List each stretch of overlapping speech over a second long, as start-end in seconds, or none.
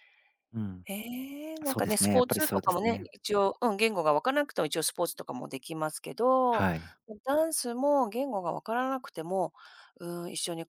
1.6-3.1